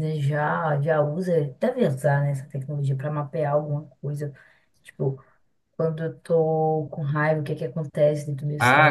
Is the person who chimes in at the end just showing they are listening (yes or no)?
no